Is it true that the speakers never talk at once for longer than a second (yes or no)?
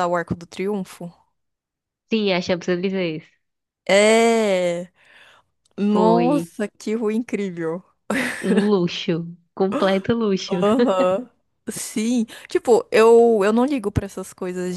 yes